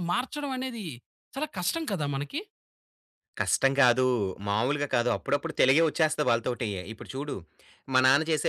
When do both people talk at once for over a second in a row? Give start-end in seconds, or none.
none